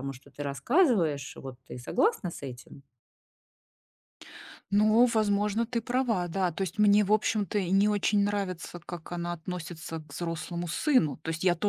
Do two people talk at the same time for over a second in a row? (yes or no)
no